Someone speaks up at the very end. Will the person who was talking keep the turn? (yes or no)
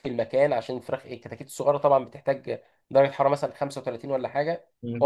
no